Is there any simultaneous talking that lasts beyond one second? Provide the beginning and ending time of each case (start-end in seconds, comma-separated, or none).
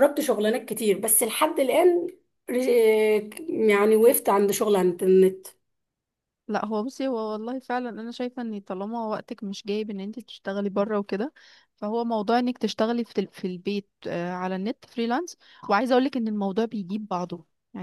none